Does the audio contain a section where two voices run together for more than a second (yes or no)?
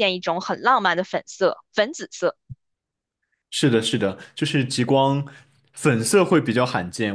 no